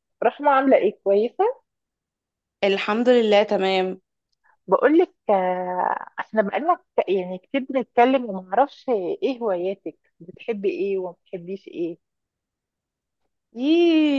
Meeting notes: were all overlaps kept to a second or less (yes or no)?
yes